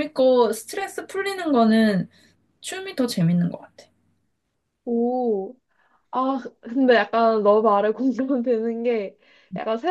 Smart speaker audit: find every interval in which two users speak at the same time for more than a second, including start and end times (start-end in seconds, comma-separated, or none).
none